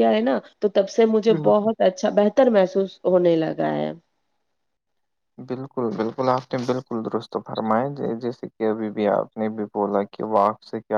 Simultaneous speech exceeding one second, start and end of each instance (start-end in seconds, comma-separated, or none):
none